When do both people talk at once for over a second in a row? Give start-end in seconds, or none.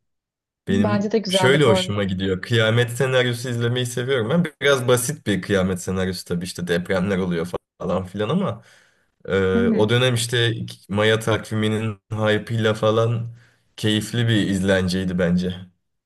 0.7-2.1